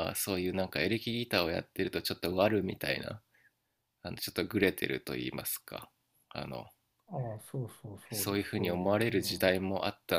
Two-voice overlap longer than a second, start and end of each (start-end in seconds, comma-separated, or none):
8.1-9.5